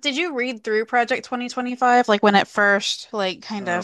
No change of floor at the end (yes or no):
no